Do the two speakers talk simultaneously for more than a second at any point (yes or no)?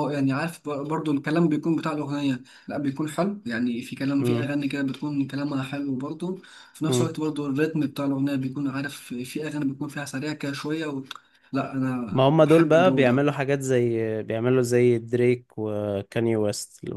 yes